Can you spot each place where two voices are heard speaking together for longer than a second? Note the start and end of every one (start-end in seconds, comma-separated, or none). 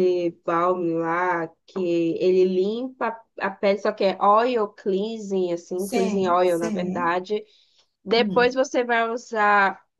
5.8-7.1